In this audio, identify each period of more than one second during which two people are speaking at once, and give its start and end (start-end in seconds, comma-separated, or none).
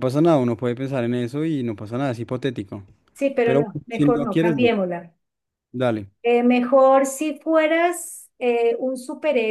3.4-4.7